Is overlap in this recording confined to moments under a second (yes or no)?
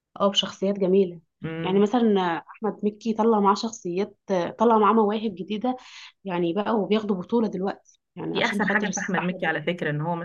no